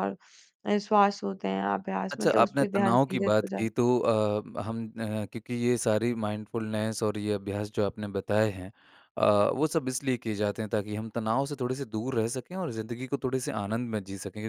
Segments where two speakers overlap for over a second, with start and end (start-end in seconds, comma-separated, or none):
2.1-3.7